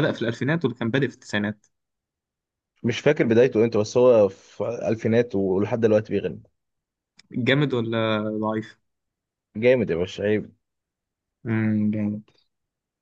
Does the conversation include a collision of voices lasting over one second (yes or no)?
no